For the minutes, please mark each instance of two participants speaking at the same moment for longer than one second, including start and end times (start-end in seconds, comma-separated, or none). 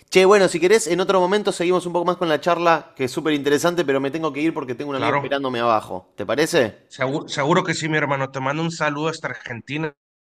none